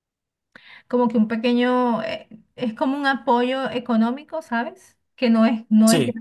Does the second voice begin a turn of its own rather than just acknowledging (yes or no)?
no